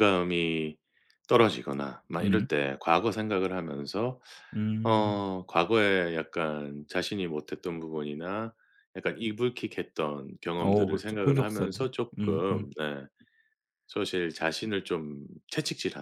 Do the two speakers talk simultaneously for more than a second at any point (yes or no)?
yes